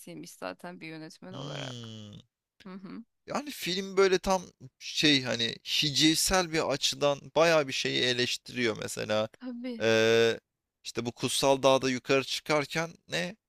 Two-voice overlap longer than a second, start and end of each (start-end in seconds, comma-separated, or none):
none